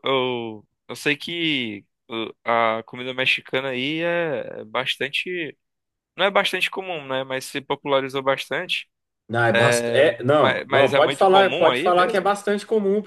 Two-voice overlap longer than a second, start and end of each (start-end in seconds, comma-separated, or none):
10.4-12.3